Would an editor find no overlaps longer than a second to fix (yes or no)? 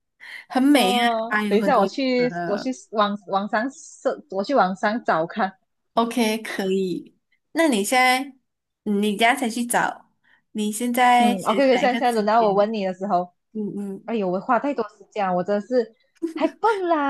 no